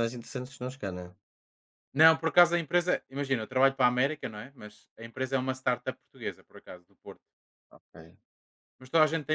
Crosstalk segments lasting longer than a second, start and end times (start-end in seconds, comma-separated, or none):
none